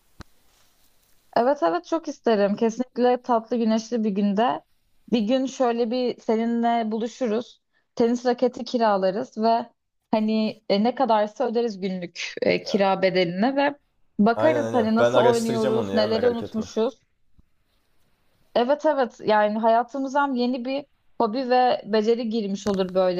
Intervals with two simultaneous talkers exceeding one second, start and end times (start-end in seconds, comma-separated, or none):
14.3-16.7